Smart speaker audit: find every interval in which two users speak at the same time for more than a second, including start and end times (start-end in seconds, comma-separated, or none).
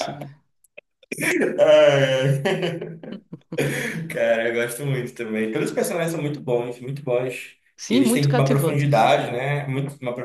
7.8-9.1